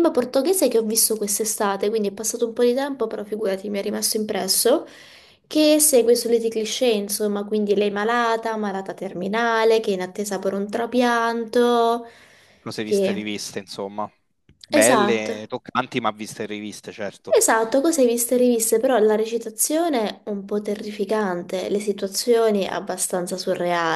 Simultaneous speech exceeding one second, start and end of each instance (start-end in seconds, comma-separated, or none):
none